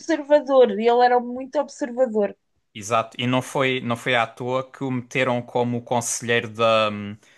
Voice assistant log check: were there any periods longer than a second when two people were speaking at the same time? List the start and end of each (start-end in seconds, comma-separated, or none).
none